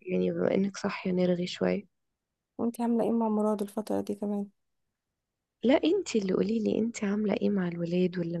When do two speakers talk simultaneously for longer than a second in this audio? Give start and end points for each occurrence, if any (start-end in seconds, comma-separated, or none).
none